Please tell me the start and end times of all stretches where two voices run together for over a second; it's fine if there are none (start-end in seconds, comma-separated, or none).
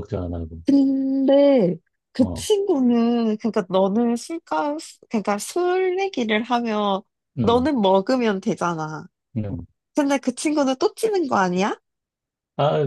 none